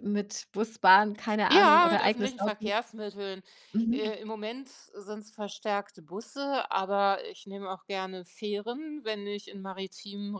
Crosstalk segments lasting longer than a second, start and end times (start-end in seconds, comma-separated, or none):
1.5-2.7